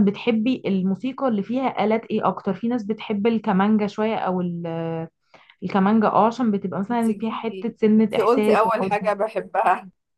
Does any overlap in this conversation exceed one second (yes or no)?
yes